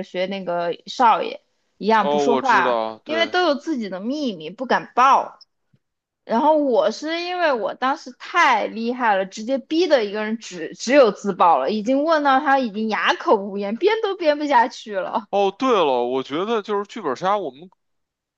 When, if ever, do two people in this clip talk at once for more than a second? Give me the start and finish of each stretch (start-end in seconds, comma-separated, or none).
2.0-3.3